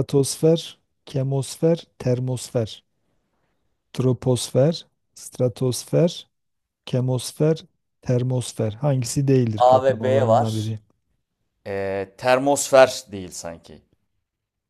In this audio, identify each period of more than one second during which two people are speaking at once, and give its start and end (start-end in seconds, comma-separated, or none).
9.6-10.8